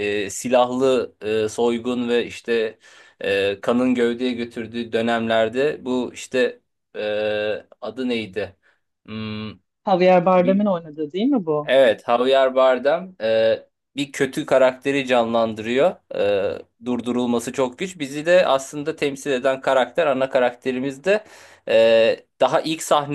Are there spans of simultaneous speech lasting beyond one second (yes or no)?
no